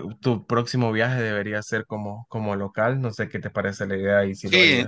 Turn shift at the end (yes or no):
yes